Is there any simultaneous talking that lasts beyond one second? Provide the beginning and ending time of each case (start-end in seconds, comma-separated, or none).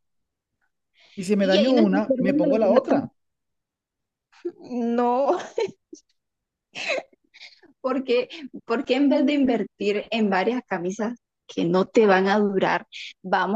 1.4-3.0